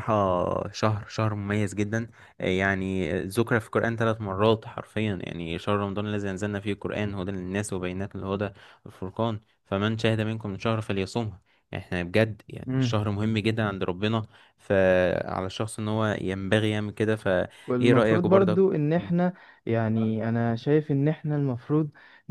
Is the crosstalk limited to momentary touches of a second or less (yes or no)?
no